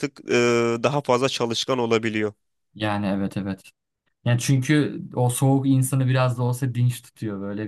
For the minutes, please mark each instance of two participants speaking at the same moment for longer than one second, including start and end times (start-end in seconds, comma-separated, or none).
none